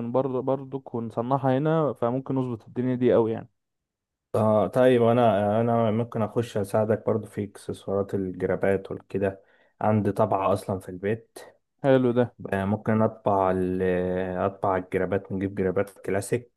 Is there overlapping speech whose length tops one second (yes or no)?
no